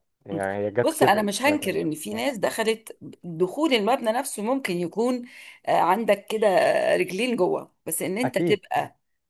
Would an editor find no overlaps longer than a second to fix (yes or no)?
no